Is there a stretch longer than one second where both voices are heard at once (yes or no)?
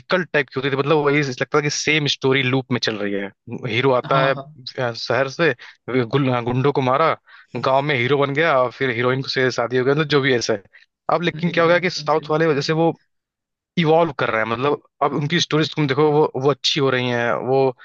yes